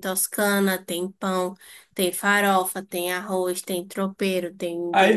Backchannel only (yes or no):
no